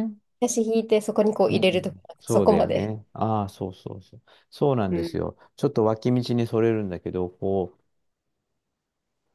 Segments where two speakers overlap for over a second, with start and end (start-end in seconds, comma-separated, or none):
1.5-2.9